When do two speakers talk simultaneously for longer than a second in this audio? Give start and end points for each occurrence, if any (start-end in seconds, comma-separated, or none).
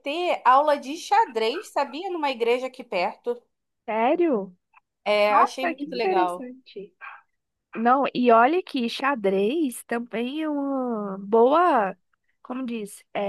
5.3-6.5